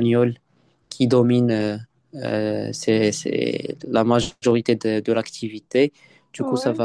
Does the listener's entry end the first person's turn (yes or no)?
no